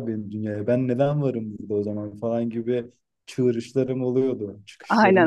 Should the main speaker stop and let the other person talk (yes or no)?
yes